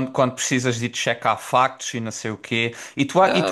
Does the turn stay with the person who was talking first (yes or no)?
yes